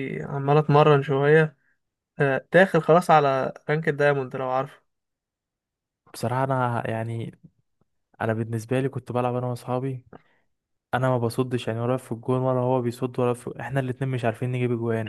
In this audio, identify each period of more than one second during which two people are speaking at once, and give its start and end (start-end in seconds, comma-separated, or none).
none